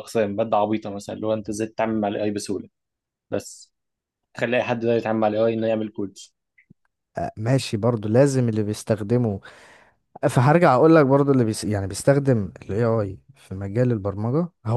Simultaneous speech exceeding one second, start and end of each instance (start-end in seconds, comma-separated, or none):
none